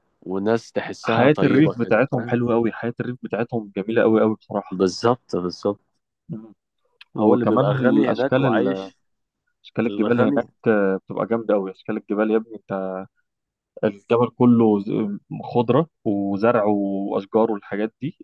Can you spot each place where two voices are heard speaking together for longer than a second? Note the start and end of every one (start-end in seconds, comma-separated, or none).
1.0-2.4, 7.2-8.9